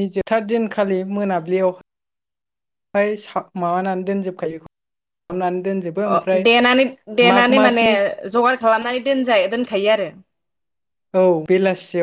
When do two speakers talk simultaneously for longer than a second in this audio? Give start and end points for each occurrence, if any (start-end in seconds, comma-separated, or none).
none